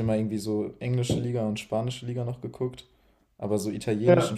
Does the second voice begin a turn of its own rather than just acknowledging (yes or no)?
no